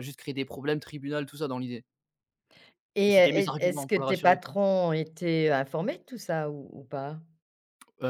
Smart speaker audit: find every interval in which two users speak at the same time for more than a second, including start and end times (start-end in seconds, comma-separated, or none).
3.0-4.5